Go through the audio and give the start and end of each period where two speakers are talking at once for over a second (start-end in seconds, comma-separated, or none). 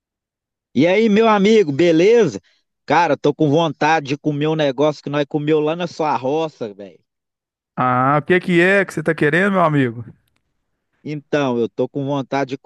none